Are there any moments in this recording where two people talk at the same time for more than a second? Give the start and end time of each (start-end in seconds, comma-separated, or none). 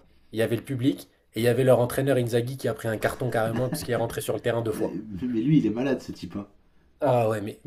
none